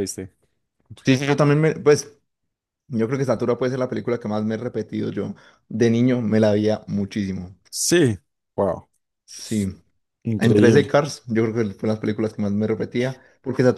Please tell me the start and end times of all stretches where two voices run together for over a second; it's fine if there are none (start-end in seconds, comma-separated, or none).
none